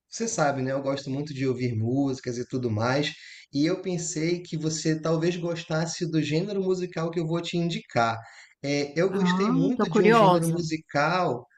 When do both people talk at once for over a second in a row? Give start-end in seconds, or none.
9.1-10.6